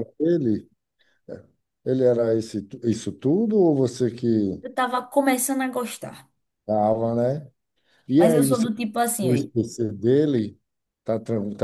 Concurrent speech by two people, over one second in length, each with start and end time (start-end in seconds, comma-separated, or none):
8.1-9.5